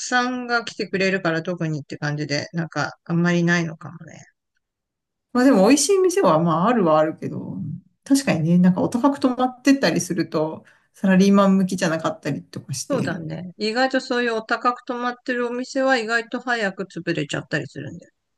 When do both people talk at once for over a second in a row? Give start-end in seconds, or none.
none